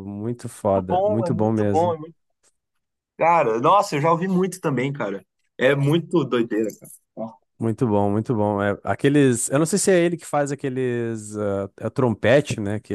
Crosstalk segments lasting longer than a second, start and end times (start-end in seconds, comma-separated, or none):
0.7-2.0